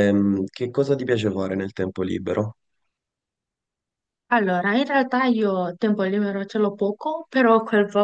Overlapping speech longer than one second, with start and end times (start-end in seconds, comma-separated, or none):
none